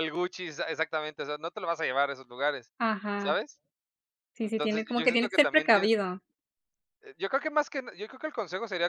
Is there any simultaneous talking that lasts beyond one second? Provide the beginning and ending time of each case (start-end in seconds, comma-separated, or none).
4.4-5.9